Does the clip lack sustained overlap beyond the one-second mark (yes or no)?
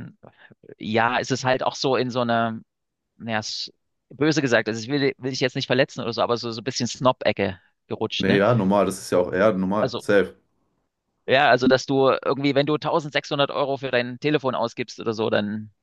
yes